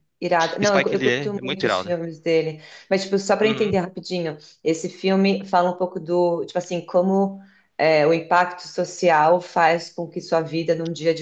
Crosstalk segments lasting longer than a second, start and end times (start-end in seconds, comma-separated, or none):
0.6-1.9